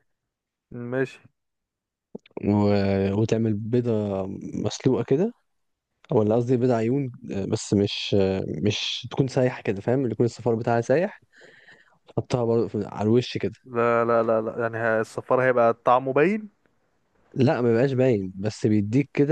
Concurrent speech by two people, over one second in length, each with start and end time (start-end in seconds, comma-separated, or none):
none